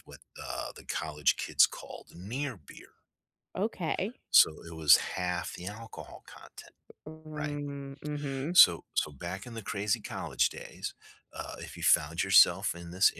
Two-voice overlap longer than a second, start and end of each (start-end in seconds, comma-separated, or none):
none